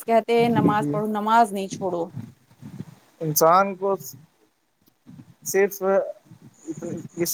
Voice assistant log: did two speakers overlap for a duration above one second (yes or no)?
no